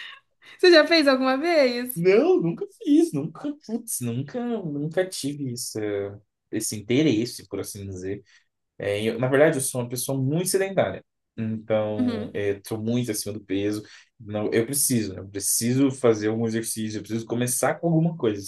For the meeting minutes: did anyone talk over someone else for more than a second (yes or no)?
no